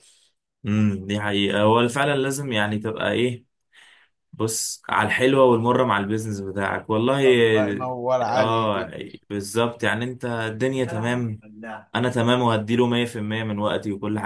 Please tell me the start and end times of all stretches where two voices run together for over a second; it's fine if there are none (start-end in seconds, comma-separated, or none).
none